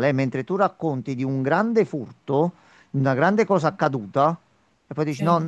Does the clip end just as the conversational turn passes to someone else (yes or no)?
no